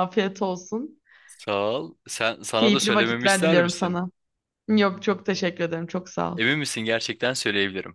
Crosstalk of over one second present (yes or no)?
yes